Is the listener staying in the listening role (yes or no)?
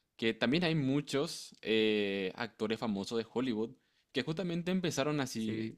yes